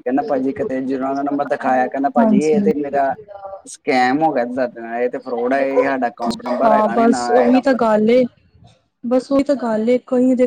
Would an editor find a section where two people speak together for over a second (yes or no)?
no